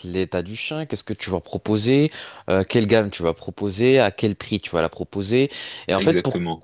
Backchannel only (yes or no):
yes